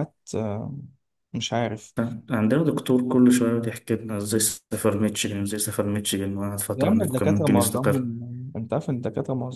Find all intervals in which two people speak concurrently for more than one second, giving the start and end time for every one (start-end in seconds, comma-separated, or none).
6.8-8.1